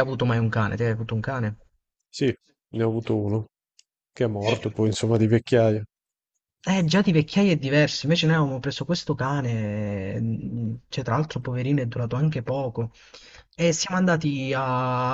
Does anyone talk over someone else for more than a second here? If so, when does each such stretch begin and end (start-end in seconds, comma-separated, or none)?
none